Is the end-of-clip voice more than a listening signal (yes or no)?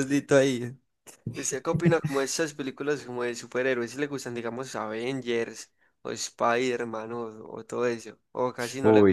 yes